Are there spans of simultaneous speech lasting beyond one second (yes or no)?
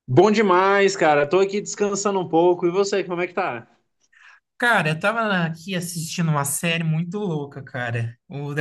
no